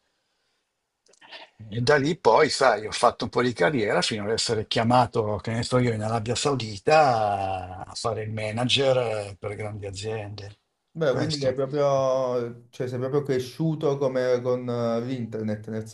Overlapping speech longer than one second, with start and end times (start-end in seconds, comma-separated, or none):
none